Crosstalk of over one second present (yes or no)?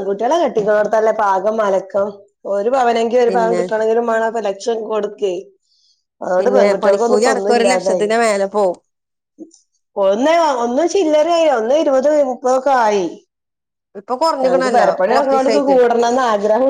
yes